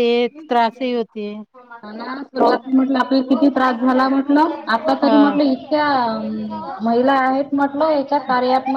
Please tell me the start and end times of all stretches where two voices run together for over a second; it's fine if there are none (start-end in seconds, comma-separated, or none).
none